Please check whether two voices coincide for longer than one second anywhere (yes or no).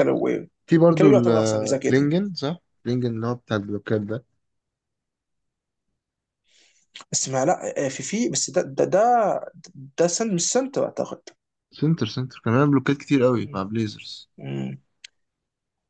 yes